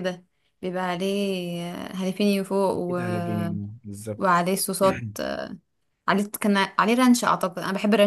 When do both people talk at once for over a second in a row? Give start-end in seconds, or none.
none